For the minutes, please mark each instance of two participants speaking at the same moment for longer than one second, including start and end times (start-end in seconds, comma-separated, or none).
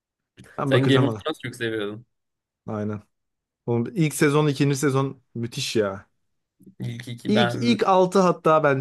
none